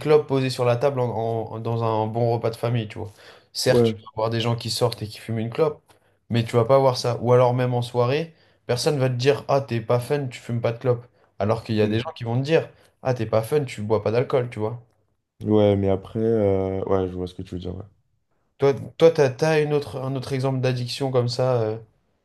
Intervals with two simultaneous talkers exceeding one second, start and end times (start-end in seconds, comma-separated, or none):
none